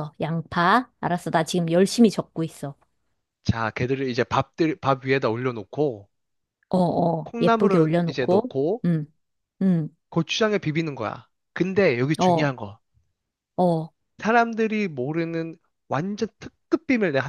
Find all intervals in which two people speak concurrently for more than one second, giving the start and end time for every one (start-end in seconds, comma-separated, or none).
7.2-8.8